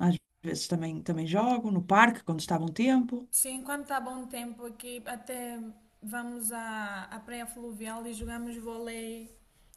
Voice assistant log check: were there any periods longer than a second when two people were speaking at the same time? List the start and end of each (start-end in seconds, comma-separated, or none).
none